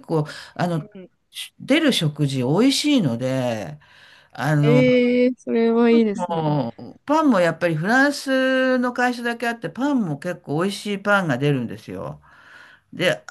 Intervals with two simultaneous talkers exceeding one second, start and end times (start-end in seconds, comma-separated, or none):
none